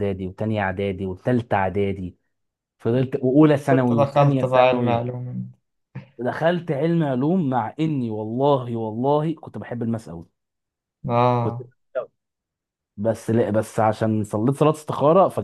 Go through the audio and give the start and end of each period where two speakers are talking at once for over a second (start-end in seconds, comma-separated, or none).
3.7-5.0